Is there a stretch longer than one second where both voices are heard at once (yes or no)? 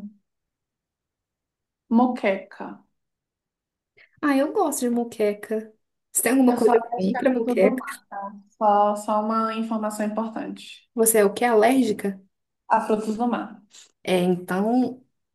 yes